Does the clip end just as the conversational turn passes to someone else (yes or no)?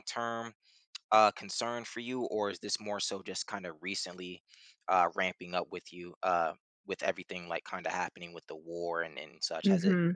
yes